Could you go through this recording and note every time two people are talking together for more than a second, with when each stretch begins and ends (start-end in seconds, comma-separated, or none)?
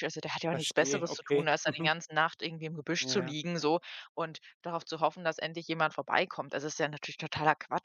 0.5-1.9